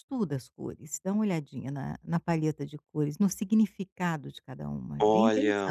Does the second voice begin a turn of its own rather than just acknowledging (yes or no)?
yes